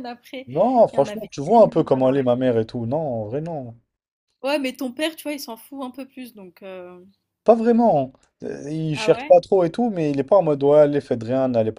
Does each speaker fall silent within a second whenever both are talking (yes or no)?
no